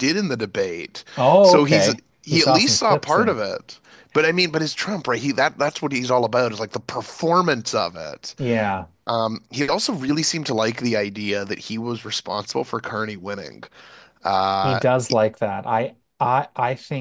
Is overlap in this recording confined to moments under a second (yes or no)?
no